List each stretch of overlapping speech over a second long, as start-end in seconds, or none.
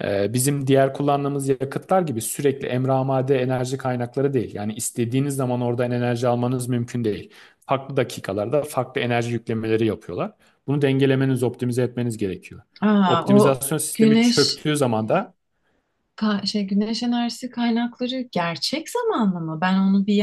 13.1-14.6